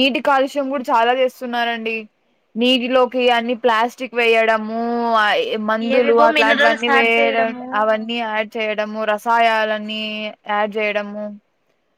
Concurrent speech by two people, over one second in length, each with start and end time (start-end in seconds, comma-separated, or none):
6.0-7.6